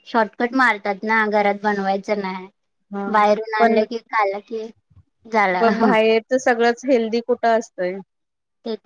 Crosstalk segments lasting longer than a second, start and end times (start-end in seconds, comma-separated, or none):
none